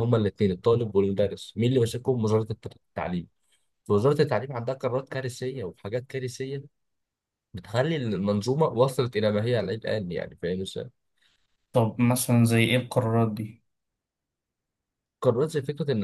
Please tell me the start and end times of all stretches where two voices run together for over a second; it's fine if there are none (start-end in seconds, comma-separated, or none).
none